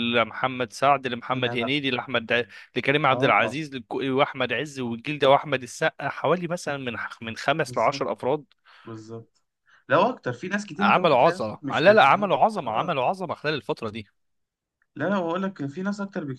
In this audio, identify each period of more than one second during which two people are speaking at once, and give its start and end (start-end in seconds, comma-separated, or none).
10.8-12.9